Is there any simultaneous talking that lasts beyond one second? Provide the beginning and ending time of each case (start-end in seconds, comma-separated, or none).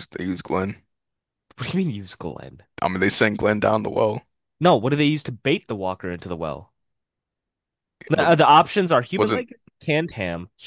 none